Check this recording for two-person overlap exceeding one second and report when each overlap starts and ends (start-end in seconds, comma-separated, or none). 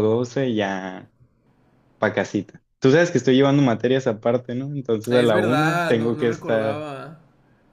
5.1-6.9